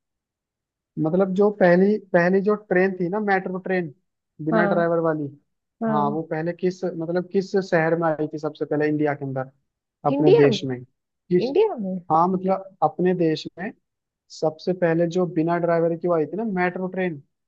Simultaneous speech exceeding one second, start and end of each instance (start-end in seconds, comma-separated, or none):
none